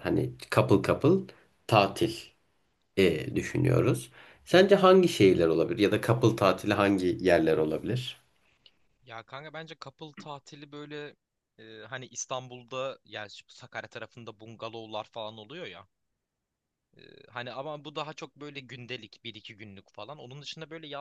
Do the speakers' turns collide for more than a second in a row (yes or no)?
no